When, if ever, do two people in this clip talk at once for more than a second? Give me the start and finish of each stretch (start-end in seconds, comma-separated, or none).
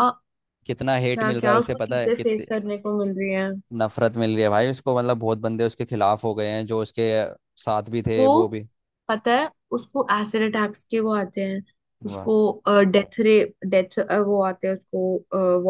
1.1-2.5